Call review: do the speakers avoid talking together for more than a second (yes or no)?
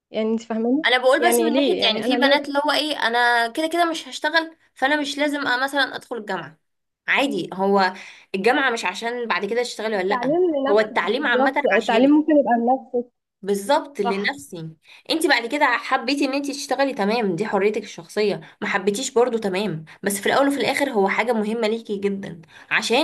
no